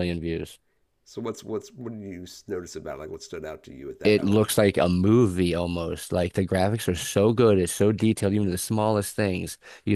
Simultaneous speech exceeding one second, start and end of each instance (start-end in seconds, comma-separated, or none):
none